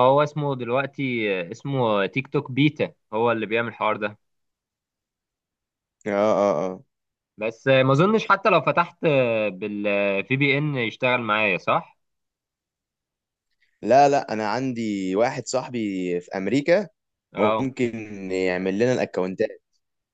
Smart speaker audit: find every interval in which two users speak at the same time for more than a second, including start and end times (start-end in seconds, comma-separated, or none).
none